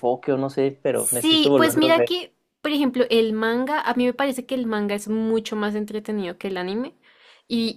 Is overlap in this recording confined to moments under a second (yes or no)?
no